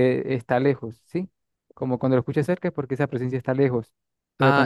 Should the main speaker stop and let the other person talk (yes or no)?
no